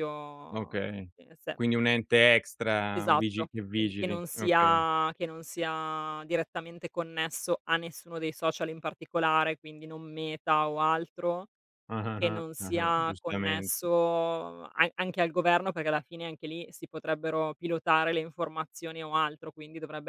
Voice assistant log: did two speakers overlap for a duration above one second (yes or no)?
yes